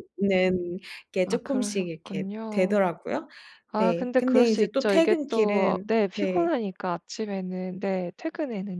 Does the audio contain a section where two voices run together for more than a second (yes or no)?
yes